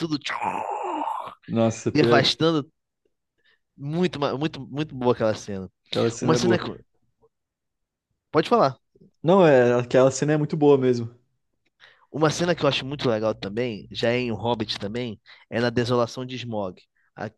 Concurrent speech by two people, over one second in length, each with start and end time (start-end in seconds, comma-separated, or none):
none